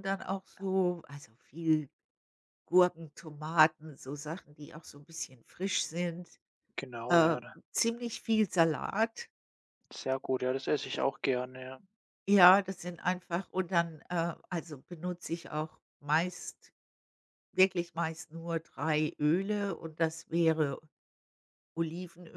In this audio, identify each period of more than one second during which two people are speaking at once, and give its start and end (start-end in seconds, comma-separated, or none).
none